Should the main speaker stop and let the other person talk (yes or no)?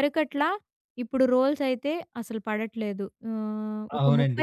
yes